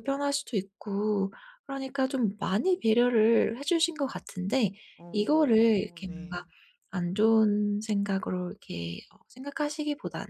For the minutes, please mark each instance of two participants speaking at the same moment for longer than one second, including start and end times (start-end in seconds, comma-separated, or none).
5.1-6.4